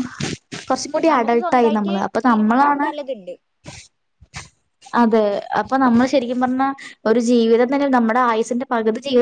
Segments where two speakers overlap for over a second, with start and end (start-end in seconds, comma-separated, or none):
1.1-2.9